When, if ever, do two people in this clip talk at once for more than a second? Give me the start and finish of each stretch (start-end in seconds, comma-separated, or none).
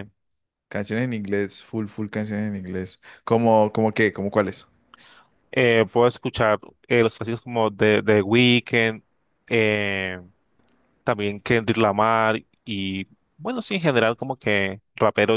none